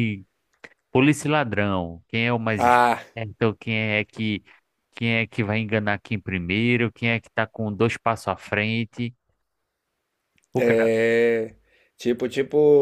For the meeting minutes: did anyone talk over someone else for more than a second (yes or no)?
no